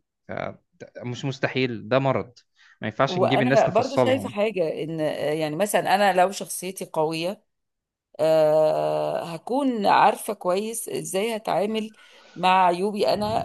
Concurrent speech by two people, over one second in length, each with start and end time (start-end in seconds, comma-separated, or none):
3.1-4.3